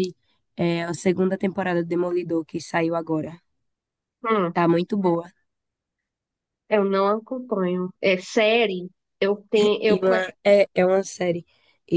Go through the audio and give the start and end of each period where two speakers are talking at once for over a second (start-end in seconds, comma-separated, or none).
none